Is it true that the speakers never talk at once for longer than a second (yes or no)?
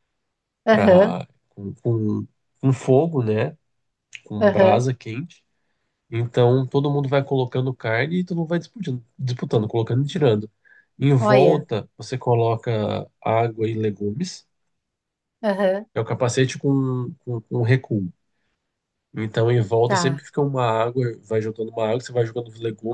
yes